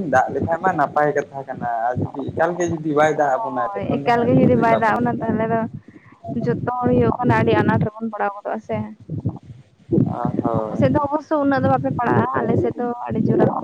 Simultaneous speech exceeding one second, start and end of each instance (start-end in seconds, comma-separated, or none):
3.7-5.3